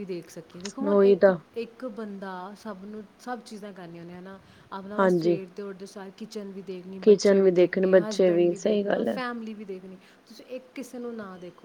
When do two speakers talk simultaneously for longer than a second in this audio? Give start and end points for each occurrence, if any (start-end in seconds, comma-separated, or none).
7.0-9.2